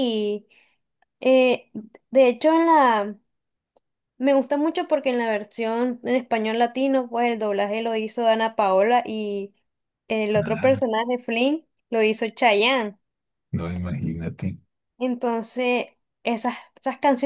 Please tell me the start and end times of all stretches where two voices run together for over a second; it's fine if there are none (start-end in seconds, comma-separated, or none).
none